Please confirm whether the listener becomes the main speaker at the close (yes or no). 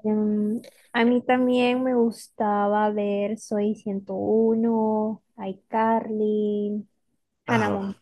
yes